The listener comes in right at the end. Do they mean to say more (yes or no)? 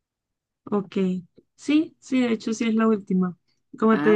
no